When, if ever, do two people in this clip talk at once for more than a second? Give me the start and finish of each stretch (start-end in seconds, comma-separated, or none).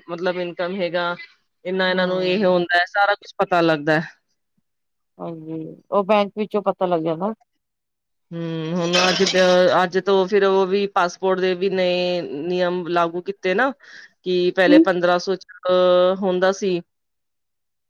none